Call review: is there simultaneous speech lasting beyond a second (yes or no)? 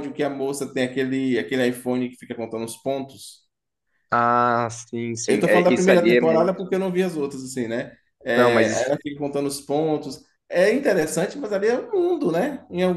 yes